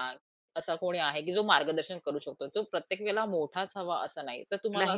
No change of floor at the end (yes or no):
no